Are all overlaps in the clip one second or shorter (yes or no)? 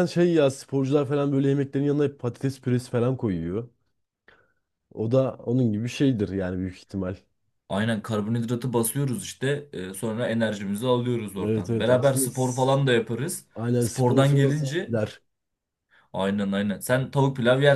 no